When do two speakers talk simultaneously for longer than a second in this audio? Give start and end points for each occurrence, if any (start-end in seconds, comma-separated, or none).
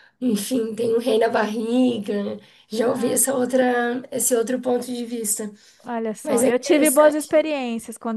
6.2-7.5